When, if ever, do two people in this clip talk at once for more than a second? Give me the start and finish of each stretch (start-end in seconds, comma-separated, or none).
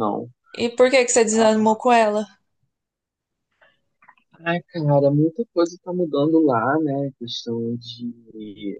none